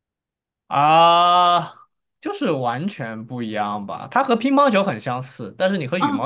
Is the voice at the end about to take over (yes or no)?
no